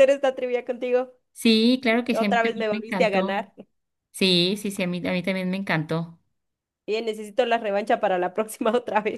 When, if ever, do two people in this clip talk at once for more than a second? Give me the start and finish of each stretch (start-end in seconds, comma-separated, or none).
2.1-3.4